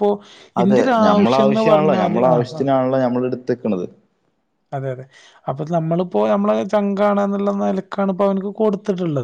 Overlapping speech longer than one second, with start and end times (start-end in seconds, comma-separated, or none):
0.6-2.6